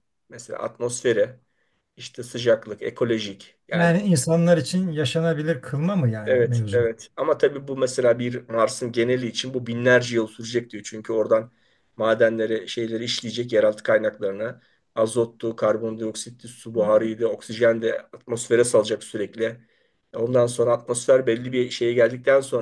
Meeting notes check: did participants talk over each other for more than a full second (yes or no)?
no